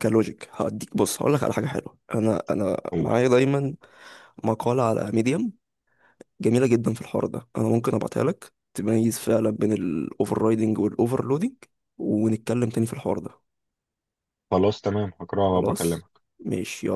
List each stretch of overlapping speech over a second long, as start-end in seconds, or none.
none